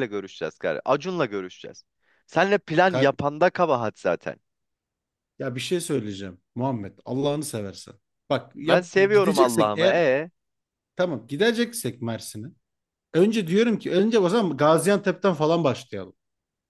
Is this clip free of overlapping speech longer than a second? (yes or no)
no